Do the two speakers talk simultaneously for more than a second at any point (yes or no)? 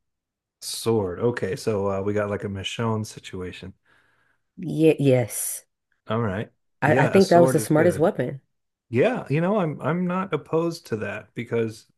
yes